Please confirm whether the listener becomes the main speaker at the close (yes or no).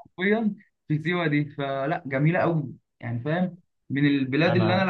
no